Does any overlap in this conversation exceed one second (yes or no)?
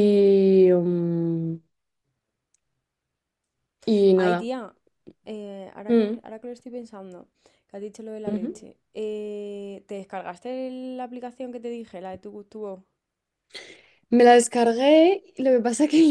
no